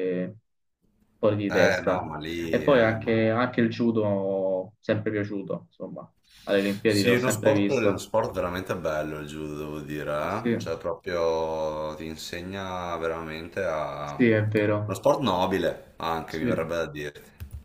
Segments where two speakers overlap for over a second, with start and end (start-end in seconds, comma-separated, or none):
1.5-3.1, 6.8-8.1